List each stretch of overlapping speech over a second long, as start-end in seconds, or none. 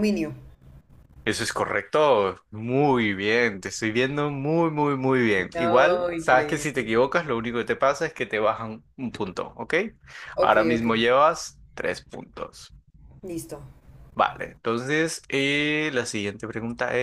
5.5-6.9